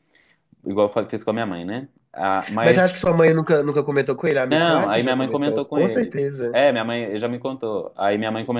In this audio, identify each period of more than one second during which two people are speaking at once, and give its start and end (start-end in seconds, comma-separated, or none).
4.5-6.6